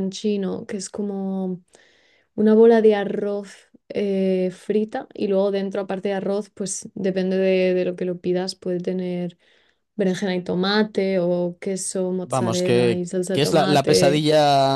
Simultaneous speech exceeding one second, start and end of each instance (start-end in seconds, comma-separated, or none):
12.2-14.2